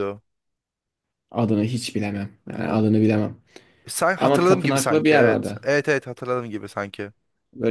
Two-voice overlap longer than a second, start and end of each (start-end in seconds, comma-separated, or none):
4.2-5.7